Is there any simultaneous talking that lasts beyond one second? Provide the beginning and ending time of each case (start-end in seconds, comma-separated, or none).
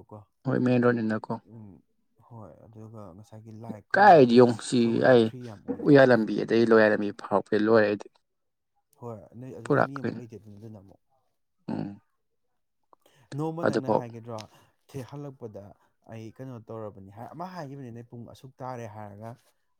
none